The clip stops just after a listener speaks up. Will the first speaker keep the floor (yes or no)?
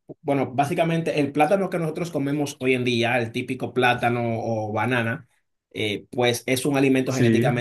yes